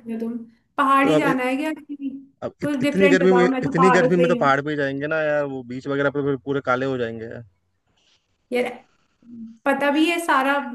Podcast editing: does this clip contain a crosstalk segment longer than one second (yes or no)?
yes